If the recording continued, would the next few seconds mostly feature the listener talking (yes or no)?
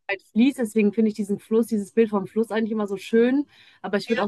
no